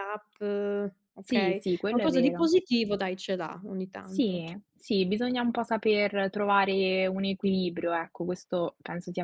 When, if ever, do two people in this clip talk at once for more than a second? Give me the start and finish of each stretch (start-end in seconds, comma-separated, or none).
1.2-2.5